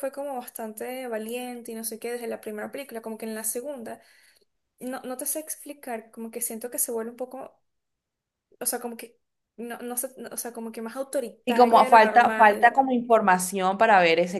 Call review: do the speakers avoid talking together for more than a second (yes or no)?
no